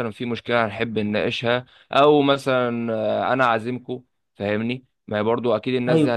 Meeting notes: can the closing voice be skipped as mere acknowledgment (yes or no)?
yes